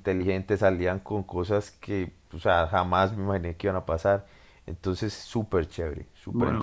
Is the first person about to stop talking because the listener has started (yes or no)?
yes